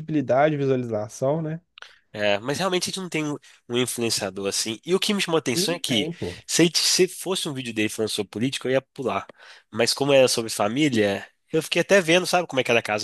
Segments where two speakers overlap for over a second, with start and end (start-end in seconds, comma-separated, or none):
none